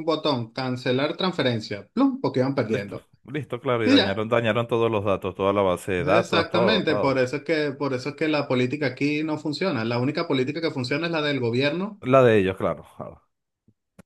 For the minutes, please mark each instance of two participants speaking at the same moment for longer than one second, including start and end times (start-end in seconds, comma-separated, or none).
6.0-7.3